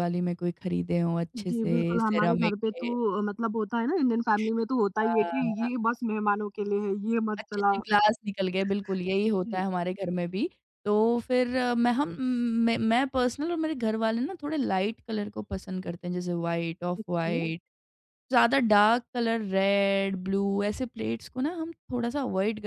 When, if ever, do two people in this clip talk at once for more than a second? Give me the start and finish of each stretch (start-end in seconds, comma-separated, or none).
1.5-3.0